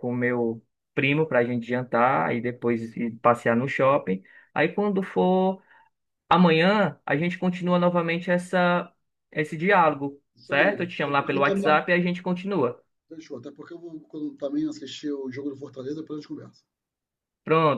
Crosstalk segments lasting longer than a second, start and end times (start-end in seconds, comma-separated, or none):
10.3-11.8